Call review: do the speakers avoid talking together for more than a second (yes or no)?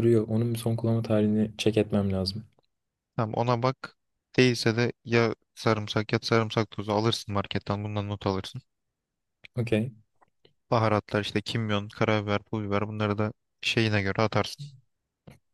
yes